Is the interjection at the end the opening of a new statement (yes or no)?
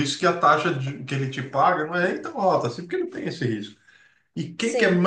no